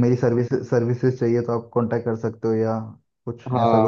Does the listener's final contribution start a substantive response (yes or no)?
yes